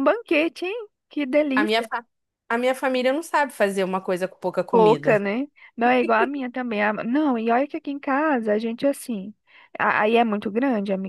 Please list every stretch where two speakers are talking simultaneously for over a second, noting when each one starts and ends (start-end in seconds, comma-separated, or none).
none